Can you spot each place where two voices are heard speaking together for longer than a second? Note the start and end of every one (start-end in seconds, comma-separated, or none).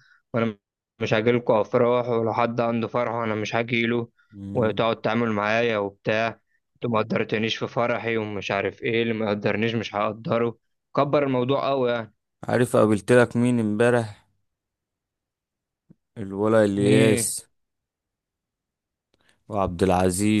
none